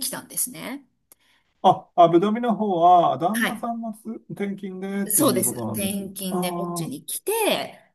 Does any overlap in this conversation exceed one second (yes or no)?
yes